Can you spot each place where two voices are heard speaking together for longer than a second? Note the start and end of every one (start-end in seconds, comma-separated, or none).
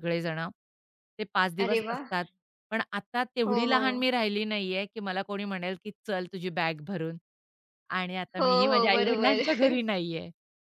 8.4-9.8